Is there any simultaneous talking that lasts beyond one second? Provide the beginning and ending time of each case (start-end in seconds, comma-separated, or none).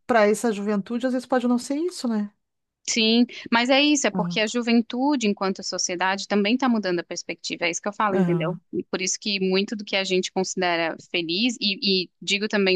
none